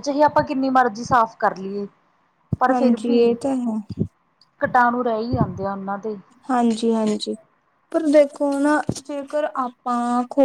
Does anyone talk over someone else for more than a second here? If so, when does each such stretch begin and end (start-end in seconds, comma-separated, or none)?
none